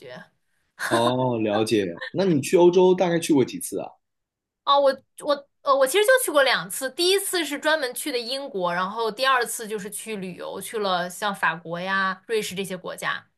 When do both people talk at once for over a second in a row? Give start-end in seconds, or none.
none